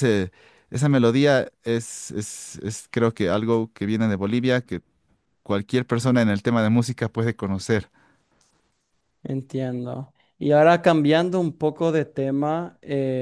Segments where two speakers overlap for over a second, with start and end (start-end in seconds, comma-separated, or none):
none